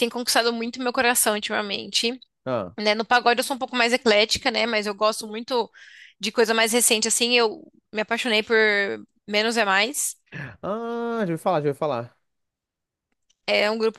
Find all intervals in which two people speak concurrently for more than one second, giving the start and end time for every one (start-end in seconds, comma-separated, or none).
none